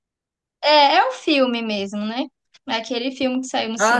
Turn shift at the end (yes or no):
yes